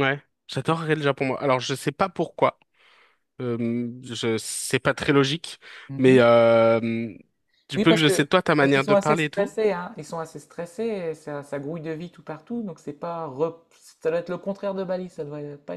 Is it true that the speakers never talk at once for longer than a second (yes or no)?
no